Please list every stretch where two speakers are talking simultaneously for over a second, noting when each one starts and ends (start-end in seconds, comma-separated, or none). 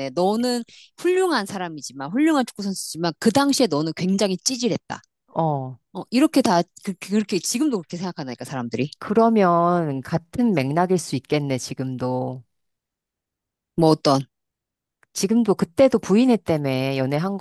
none